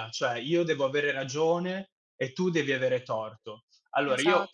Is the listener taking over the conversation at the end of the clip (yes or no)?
no